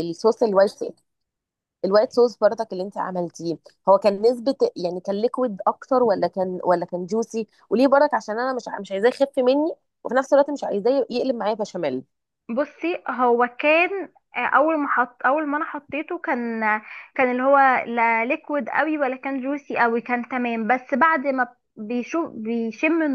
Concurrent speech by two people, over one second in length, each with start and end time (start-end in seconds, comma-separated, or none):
none